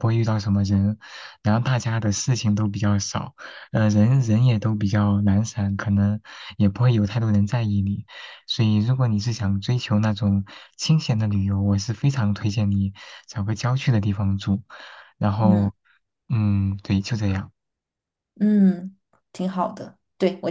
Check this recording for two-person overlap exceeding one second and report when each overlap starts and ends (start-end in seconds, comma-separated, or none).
none